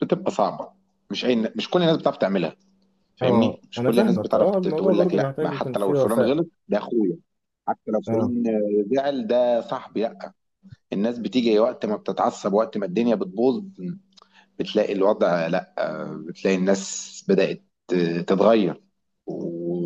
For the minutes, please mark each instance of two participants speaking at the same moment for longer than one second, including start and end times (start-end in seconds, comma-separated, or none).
3.2-6.4